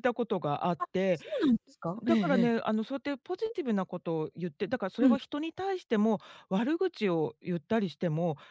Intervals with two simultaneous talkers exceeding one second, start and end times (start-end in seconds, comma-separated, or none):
none